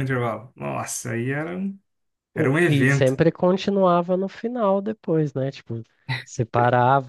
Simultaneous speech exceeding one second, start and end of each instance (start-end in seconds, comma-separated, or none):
none